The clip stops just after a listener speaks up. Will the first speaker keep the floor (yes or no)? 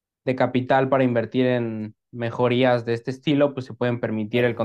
yes